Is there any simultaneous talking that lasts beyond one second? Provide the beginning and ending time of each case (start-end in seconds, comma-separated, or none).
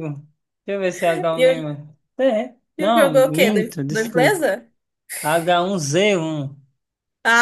2.8-4.5